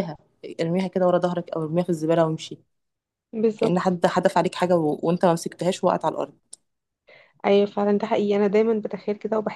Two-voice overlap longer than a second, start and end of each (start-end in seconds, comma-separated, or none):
none